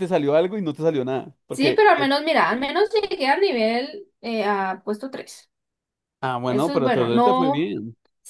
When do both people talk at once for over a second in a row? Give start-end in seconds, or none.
6.5-7.7